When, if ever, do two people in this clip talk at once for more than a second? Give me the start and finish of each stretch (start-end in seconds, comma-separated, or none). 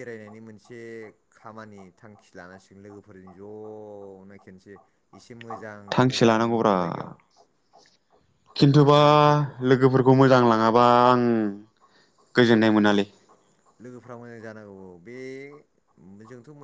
none